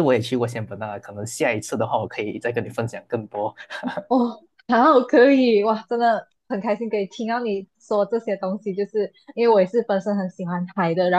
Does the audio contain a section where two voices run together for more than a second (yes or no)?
no